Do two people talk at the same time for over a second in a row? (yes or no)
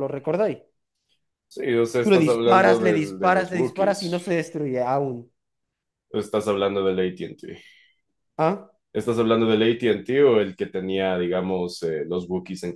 yes